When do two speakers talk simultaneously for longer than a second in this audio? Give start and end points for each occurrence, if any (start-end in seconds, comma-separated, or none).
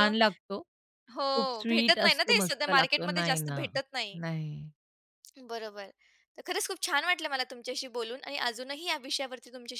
1.7-3.6